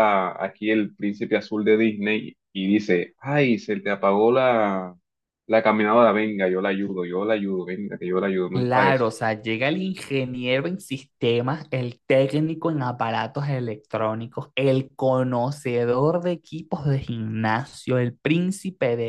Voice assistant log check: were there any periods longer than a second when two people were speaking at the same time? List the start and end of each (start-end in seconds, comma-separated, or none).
none